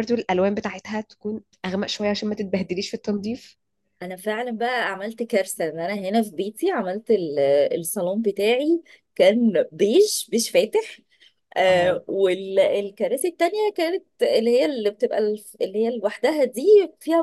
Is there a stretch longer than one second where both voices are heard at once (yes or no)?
no